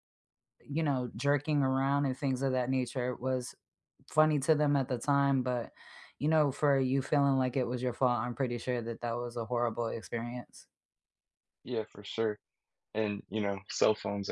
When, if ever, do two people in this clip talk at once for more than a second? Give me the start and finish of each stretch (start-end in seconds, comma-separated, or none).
none